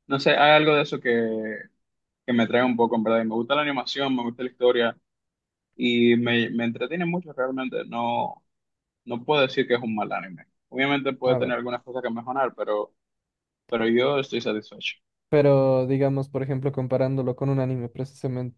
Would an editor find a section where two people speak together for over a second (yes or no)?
no